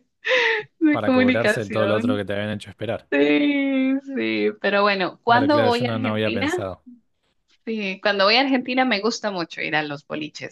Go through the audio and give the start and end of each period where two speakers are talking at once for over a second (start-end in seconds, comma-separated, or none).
0.9-2.2, 5.2-6.5